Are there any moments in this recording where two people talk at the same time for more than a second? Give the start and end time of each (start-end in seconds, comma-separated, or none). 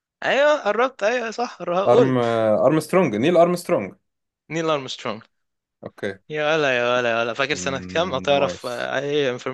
7.5-8.9